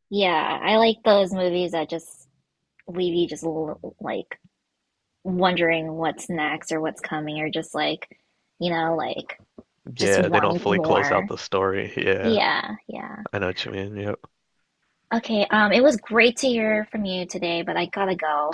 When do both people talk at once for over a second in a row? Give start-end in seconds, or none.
10.0-11.3